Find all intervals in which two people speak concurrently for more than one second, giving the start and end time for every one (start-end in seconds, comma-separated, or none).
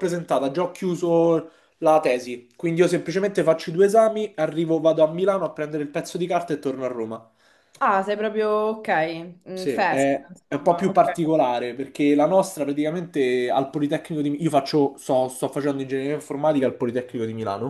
9.5-11.2